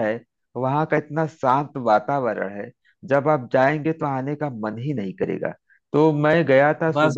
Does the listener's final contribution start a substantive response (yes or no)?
no